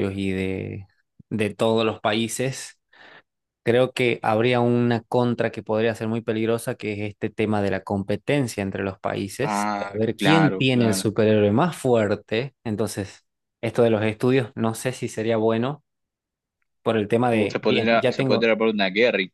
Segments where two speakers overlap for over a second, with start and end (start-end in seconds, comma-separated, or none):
9.4-11.0, 17.3-18.5